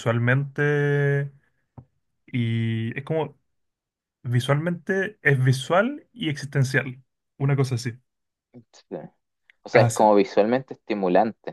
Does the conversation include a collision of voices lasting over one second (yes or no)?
no